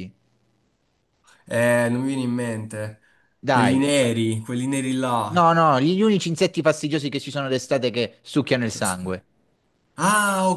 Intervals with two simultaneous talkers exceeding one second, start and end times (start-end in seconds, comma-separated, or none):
none